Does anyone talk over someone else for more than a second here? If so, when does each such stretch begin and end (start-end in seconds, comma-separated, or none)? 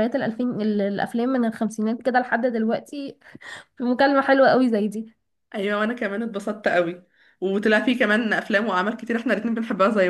none